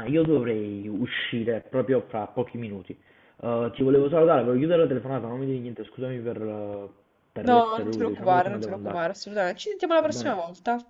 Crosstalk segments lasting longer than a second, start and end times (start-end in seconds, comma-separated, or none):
7.4-9.0